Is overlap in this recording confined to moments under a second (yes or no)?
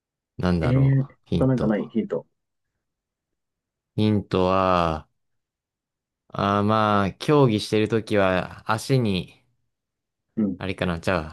no